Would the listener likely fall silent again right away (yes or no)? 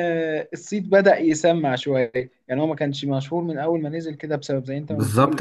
no